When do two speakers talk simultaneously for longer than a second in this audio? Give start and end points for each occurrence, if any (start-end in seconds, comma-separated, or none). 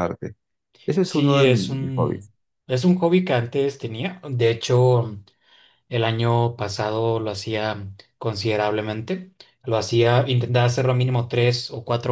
1.0-2.3